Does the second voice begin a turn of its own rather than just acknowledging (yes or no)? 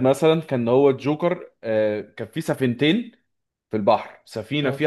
no